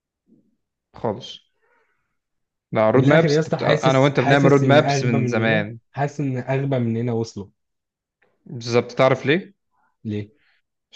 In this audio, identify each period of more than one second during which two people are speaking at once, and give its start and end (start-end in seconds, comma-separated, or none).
2.9-5.8